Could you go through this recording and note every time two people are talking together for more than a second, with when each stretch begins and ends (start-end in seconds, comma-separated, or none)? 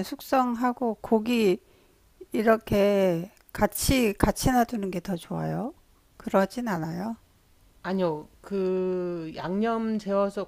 none